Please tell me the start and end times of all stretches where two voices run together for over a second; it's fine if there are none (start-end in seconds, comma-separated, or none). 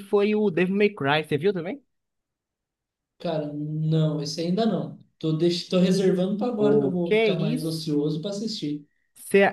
6.6-7.8